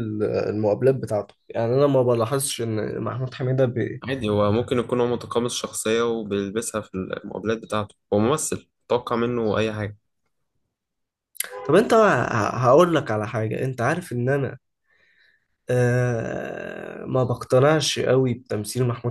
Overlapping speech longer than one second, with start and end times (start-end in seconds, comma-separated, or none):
none